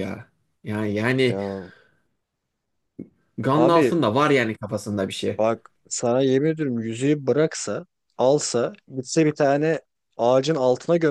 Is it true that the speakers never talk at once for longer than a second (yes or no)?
yes